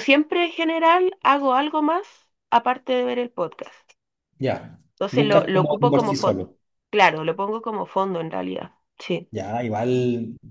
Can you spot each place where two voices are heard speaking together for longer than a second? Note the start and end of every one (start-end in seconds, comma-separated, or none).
4.9-6.5